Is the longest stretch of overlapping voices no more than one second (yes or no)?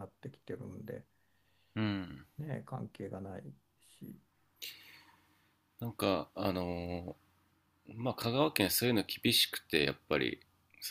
yes